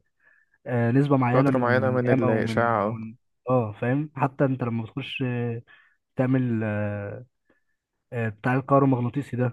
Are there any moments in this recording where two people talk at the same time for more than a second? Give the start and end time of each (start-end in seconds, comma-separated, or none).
1.3-3.0